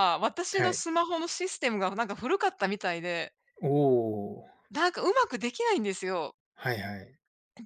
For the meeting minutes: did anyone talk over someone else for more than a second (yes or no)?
no